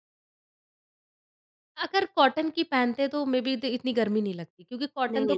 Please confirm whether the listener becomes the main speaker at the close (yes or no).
no